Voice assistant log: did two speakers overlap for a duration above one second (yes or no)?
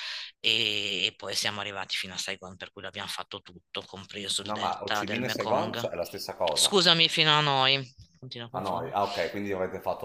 yes